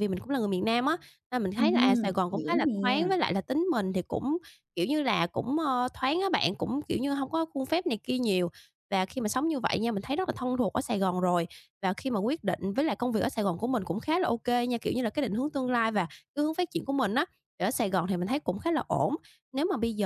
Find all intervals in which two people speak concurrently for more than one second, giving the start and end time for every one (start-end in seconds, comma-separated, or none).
1.6-3.1